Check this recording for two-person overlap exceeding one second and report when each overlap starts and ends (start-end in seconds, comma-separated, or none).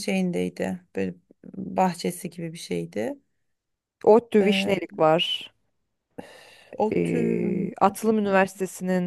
6.9-8.4